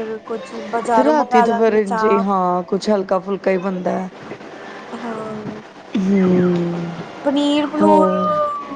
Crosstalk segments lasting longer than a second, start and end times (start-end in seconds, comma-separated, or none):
1.0-2.3